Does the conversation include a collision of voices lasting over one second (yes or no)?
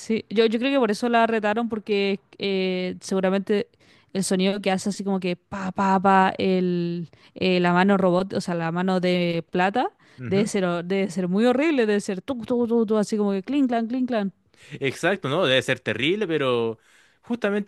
no